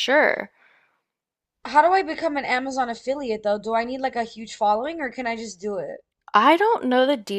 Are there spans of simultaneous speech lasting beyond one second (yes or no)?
no